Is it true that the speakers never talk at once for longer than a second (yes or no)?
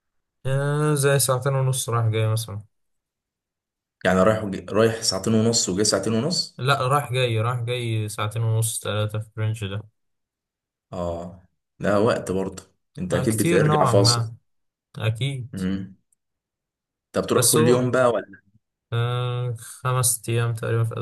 no